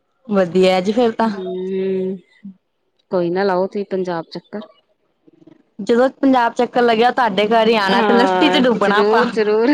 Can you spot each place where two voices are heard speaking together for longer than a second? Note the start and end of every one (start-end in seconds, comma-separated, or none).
7.9-9.2